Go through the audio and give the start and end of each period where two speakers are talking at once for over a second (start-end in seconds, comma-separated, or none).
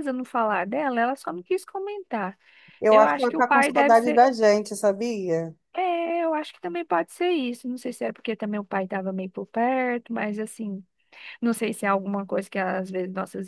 2.9-4.2